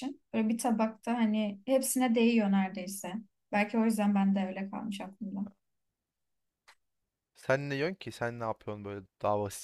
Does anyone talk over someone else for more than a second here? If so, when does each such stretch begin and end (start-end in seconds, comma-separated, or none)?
none